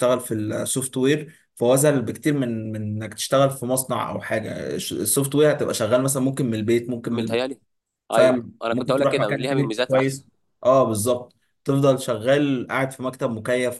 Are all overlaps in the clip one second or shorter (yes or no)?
no